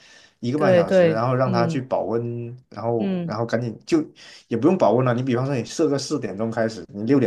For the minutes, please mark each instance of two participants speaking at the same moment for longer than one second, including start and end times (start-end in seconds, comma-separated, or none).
0.5-1.8